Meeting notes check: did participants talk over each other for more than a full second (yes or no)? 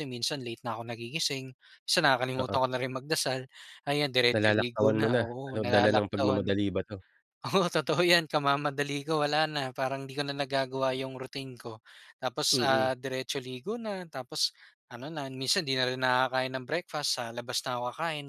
yes